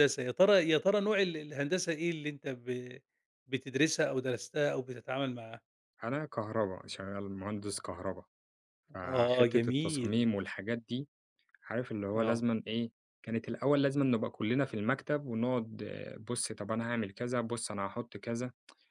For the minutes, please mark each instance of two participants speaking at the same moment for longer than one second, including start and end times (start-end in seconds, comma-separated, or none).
9.0-10.3